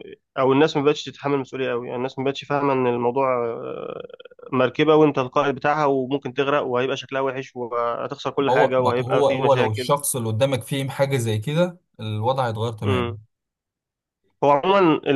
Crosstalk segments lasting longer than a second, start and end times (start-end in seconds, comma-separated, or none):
8.4-9.9